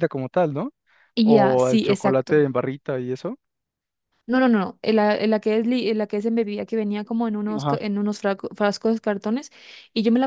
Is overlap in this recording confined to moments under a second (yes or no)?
no